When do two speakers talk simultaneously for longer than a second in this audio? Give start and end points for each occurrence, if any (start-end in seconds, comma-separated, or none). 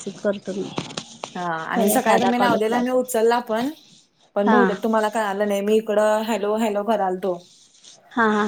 1.8-3.0